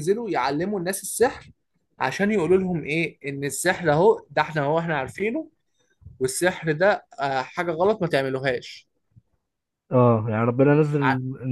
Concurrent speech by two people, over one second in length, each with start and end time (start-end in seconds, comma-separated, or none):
none